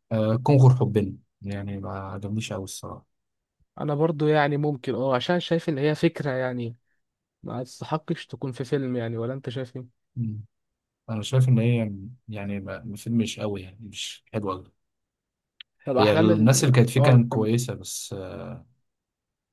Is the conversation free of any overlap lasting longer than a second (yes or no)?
no